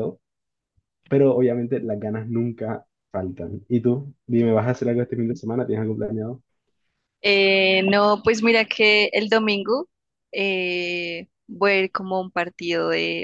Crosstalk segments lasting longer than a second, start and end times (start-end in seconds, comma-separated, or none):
none